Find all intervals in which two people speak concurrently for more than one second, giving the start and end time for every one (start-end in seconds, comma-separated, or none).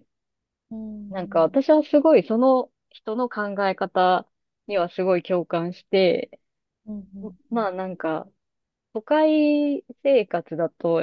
none